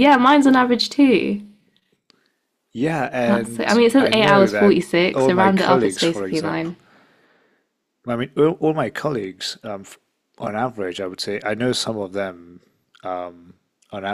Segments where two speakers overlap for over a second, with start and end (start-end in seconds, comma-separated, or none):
3.2-6.7